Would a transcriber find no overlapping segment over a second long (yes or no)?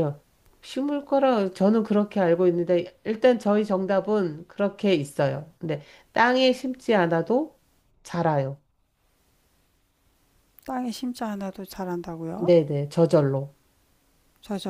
yes